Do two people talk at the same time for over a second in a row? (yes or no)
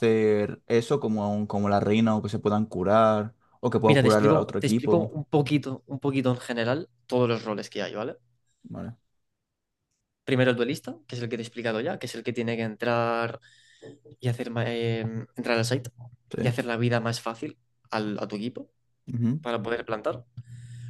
yes